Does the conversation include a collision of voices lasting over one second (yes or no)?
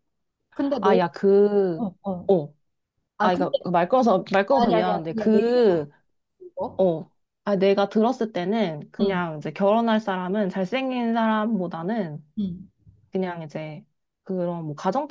yes